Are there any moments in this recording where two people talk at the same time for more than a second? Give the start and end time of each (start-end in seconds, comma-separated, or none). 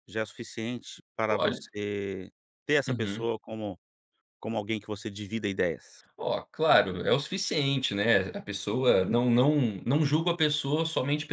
none